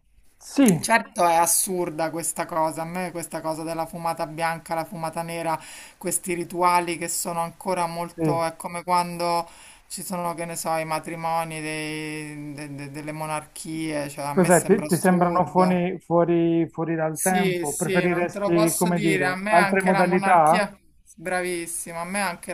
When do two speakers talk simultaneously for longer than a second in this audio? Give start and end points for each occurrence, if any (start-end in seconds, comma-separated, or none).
14.3-15.8, 17.1-20.6